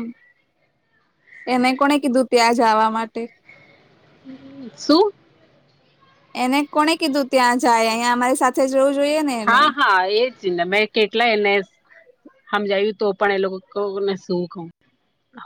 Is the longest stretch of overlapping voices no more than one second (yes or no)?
yes